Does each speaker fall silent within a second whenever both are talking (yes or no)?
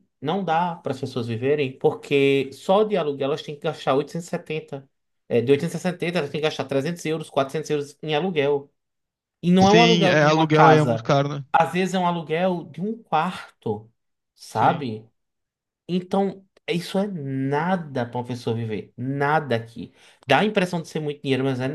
no